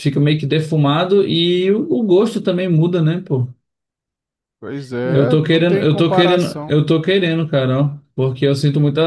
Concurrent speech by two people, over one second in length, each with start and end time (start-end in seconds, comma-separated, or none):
5.0-6.8